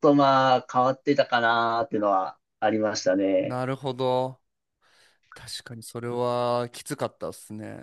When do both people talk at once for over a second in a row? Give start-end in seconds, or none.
none